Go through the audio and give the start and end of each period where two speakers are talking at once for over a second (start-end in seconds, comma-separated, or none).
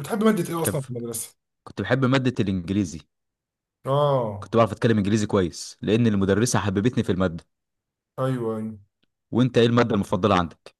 none